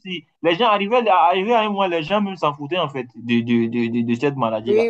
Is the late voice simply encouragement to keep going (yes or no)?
no